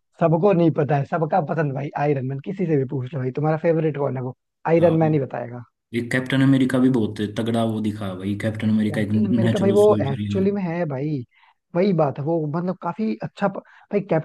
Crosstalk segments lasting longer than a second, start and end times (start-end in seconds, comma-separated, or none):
8.9-10.4